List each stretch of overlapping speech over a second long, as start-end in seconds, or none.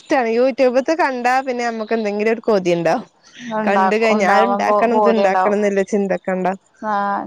3.7-5.6